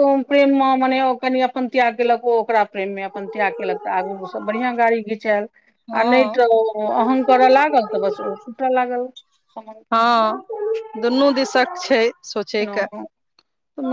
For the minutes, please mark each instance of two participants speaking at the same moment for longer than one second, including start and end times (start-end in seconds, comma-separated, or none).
none